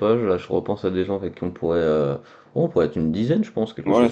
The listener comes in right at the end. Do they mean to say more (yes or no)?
yes